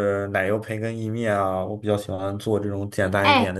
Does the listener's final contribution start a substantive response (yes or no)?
yes